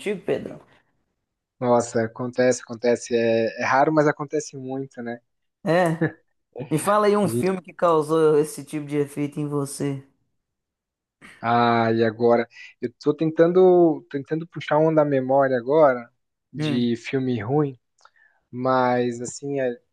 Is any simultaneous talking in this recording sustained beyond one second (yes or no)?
no